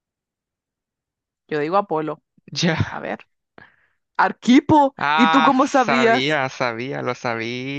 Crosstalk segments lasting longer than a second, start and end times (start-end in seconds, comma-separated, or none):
5.0-6.4